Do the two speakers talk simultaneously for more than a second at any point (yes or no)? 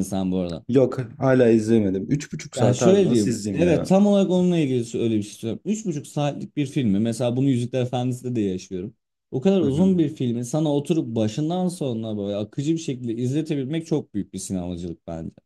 yes